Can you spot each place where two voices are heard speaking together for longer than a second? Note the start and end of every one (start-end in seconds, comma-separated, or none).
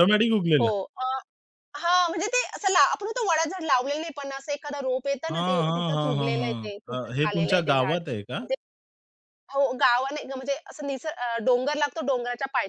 5.3-8.0